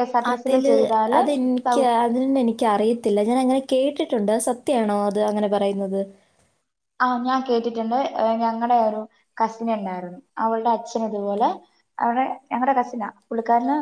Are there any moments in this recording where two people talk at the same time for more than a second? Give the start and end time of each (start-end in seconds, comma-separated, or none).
none